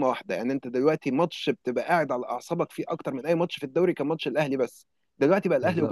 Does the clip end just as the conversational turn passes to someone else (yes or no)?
yes